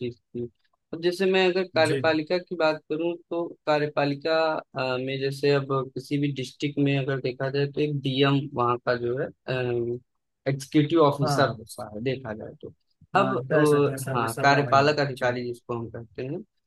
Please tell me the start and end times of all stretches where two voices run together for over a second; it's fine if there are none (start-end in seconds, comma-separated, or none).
13.2-15.3